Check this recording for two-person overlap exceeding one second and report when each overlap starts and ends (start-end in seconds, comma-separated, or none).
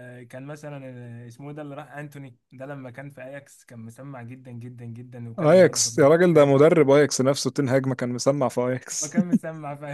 5.4-6.6